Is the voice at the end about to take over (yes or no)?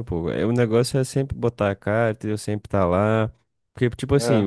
no